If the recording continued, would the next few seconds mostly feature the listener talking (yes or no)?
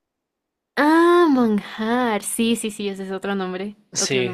yes